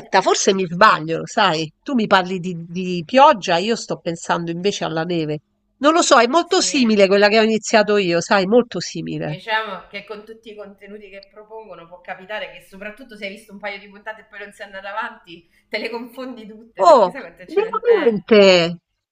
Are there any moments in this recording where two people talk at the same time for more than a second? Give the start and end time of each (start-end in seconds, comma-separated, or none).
16.8-18.3